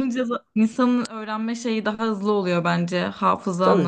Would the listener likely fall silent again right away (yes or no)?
no